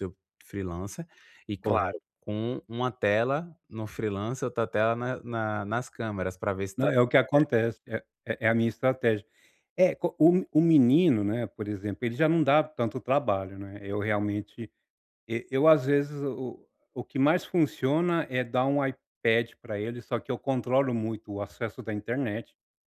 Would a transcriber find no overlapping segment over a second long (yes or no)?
yes